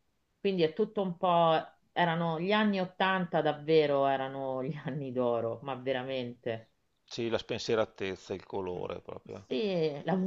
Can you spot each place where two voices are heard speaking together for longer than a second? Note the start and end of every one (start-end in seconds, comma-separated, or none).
none